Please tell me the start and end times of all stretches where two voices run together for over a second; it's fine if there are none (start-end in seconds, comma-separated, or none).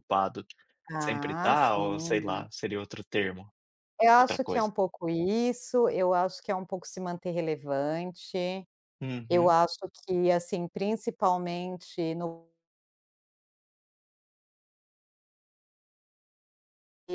1.0-2.5